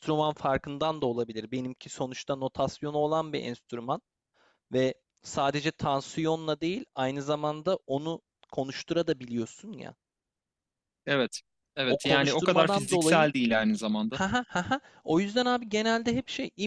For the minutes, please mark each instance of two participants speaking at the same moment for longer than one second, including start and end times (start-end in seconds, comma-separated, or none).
11.9-13.3